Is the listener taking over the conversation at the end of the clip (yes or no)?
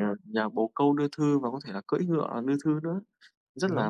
yes